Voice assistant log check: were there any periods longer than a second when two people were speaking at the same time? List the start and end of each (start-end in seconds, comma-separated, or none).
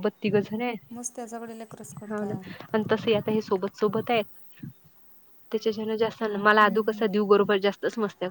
none